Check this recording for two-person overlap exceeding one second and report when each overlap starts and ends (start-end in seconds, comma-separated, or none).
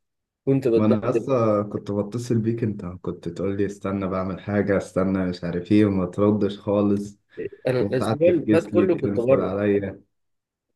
7.8-9.5